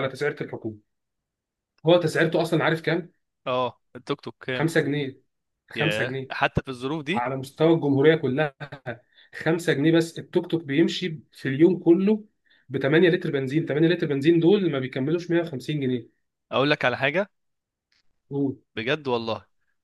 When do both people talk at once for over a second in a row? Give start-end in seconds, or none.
none